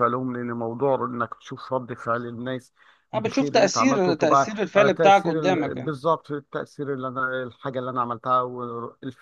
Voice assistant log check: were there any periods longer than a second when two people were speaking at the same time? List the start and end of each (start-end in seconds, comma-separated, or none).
3.1-5.9